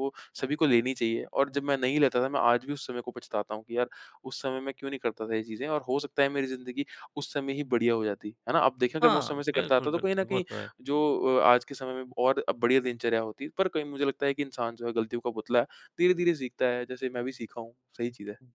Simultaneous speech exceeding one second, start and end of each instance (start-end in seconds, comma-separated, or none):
9.0-10.4